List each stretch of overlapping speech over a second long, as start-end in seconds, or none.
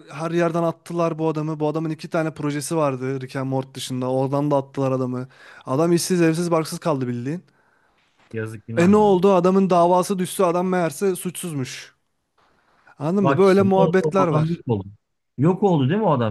13.2-14.6